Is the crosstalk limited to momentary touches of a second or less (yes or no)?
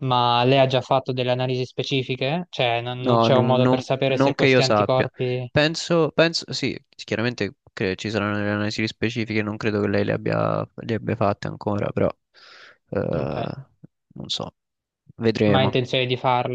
no